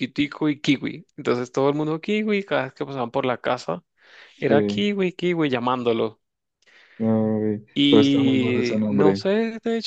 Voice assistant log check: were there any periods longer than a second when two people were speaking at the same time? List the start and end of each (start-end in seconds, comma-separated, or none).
7.7-9.3